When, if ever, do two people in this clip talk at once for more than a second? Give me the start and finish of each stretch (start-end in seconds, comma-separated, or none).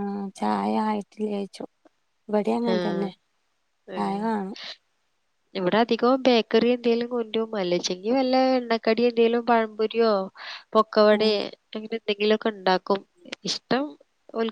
none